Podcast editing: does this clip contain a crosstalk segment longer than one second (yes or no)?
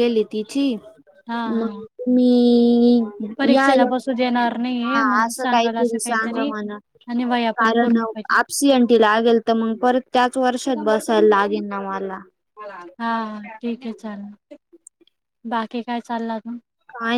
yes